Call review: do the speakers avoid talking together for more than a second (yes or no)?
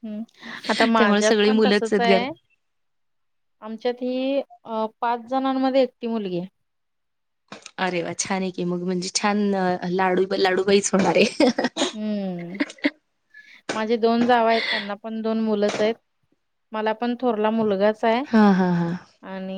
no